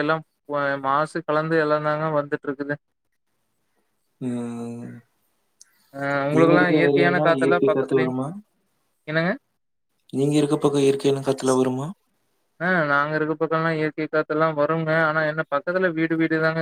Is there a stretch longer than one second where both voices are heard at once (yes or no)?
yes